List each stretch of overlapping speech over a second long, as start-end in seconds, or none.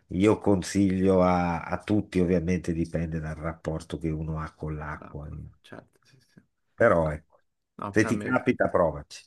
none